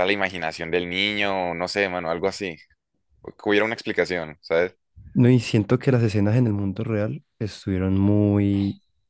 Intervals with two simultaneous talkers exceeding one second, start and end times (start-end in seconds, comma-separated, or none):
none